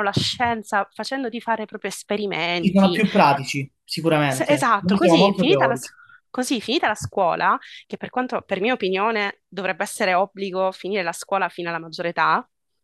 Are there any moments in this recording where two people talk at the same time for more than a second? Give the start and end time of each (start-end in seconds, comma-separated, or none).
4.2-5.9